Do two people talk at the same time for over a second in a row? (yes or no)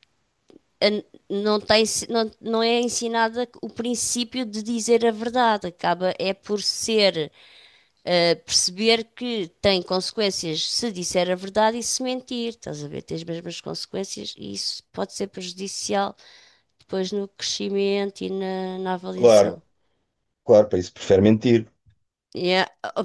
no